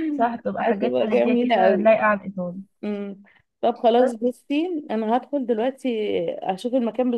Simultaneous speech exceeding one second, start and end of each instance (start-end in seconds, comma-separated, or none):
0.6-1.9